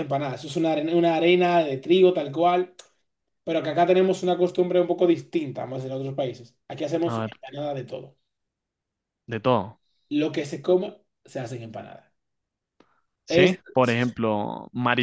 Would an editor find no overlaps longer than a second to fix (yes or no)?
yes